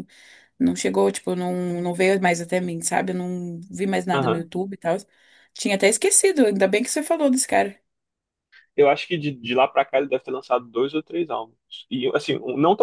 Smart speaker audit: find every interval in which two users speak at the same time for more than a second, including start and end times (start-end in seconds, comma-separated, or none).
none